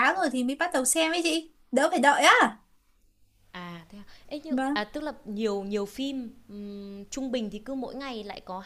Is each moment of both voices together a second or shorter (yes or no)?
yes